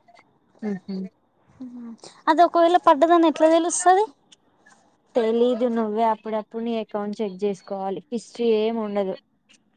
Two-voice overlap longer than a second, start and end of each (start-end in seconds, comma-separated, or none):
none